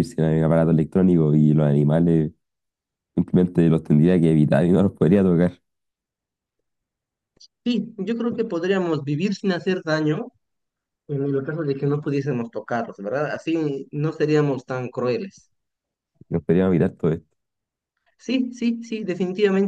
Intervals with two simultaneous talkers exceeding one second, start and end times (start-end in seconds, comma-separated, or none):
none